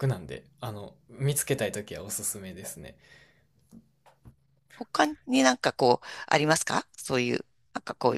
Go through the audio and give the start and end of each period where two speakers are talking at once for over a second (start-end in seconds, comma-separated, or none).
none